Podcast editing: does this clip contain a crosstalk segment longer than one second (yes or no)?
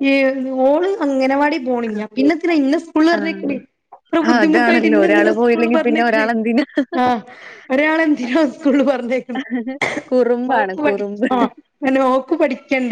yes